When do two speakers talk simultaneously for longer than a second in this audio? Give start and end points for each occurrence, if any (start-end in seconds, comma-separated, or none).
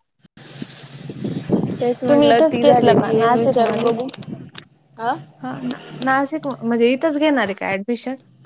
2.1-3.9